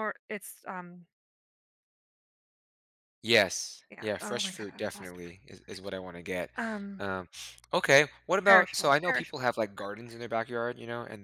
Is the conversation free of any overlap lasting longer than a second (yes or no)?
no